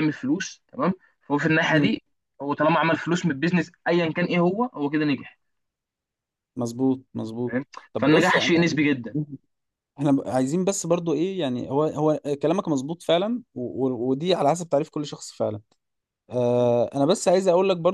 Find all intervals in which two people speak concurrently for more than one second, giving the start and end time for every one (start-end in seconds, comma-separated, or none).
7.5-8.8